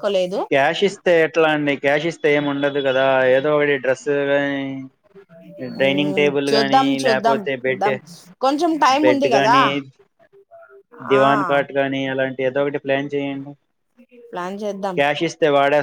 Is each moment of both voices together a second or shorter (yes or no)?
no